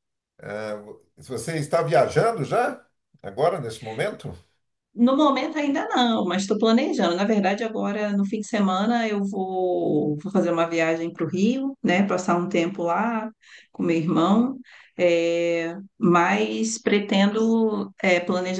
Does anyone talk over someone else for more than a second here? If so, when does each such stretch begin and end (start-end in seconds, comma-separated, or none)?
none